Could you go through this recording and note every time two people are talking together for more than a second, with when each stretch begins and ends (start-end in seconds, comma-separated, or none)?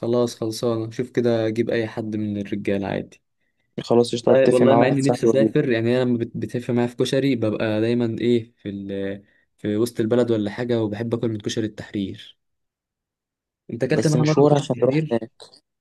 4.3-5.5, 13.9-15.3